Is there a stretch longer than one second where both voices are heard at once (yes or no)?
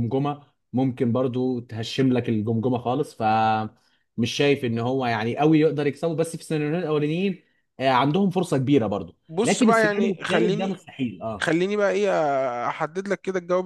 yes